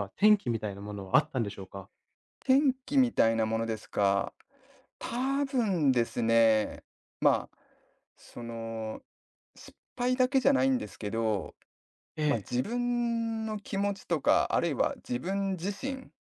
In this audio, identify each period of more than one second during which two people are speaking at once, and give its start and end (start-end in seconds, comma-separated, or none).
none